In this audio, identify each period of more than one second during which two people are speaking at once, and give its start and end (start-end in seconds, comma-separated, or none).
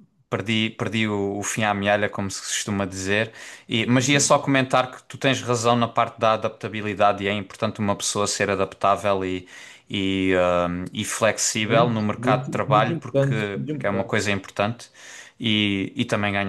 11.6-14.2